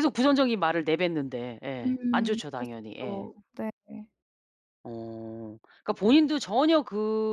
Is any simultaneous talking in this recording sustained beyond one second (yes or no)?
yes